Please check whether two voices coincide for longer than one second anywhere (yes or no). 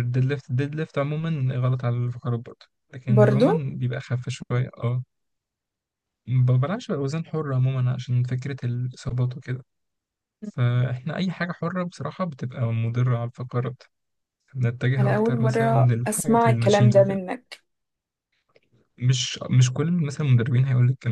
yes